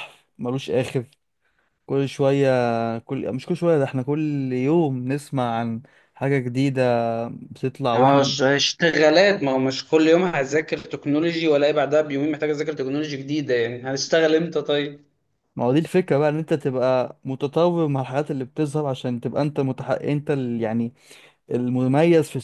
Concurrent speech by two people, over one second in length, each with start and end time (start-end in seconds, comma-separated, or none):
none